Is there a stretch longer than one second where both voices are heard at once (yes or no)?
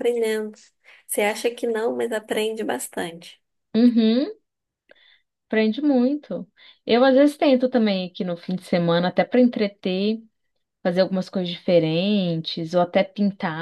no